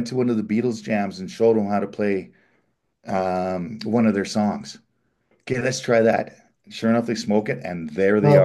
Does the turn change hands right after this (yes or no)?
yes